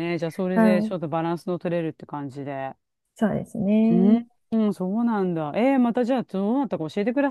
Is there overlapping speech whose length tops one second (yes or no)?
no